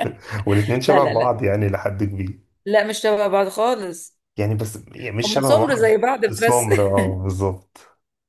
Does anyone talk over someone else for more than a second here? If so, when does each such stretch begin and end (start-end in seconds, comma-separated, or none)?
5.2-6.7